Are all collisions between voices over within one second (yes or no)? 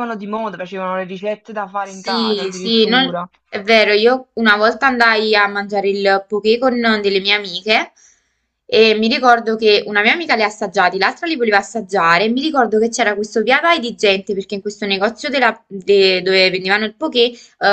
no